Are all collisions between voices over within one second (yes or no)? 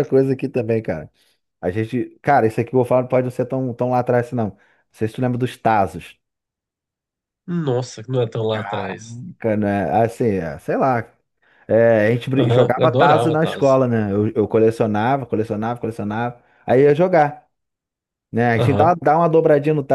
no